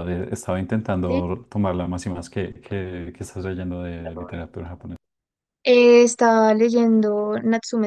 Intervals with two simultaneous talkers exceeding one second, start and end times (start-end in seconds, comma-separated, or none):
none